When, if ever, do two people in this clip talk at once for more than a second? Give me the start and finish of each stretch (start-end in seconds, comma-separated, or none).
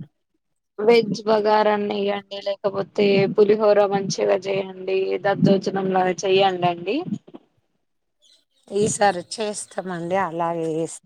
none